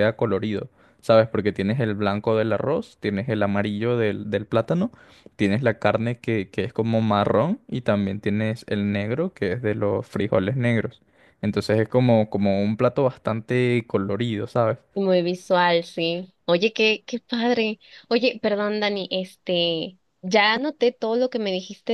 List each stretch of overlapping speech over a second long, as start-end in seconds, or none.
none